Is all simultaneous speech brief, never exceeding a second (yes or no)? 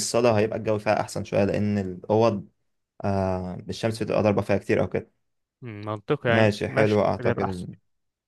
no